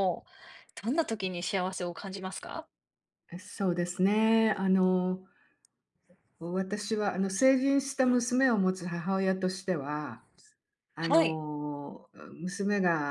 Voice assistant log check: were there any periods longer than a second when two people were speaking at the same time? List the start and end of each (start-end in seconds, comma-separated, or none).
none